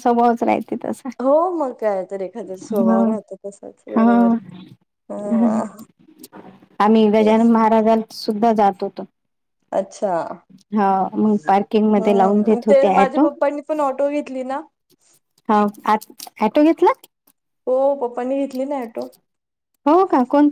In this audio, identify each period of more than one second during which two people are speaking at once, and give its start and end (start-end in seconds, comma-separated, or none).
11.2-13.2